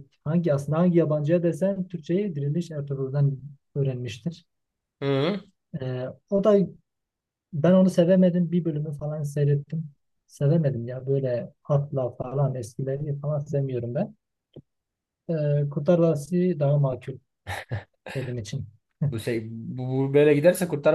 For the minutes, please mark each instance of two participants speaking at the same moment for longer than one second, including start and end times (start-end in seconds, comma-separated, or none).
none